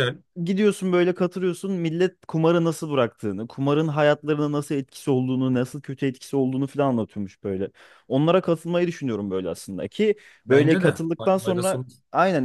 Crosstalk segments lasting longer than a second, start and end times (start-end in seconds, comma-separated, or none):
10.4-11.9